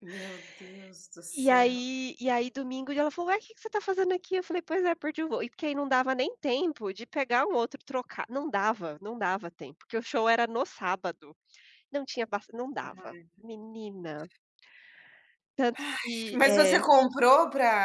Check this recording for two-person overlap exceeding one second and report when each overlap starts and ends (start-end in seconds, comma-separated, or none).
none